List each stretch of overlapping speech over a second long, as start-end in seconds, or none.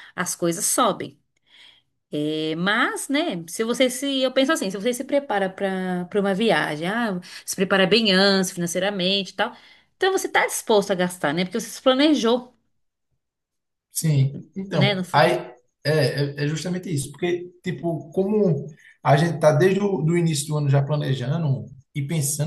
none